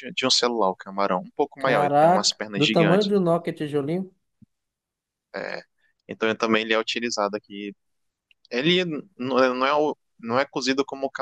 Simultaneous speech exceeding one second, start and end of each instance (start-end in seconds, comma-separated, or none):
1.6-3.1